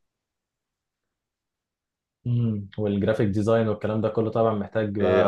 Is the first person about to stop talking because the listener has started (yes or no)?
yes